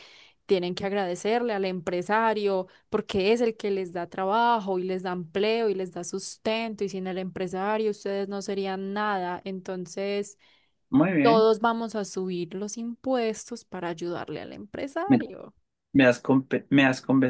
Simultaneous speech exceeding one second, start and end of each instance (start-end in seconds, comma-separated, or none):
none